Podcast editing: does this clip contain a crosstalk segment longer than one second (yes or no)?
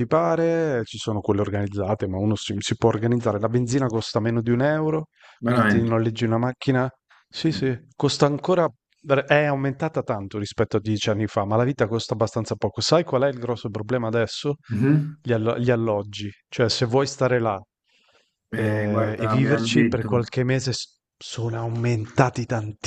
yes